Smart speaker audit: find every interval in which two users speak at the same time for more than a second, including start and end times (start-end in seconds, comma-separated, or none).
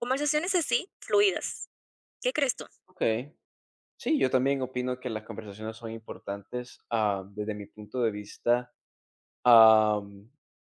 none